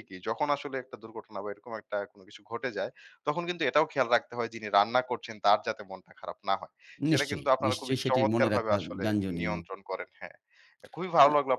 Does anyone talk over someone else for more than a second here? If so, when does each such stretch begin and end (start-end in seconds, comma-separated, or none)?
7.1-9.6